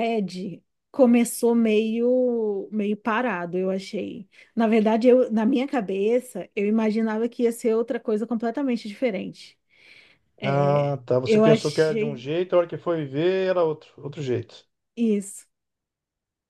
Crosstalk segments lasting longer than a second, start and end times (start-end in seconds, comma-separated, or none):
10.4-12.3